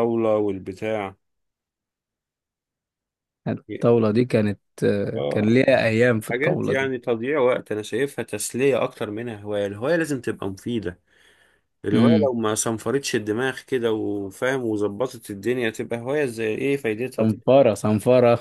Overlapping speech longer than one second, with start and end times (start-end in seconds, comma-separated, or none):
none